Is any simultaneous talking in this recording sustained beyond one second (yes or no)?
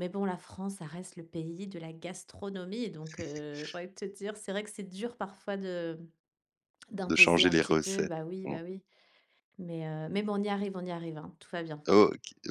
yes